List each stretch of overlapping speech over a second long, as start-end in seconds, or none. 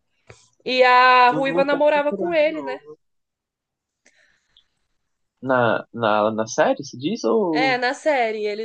1.3-2.8